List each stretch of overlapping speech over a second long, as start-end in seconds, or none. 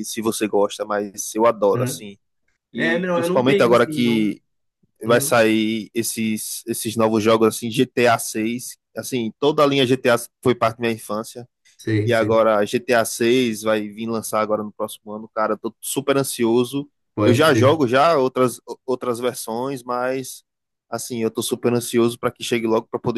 2.7-4.3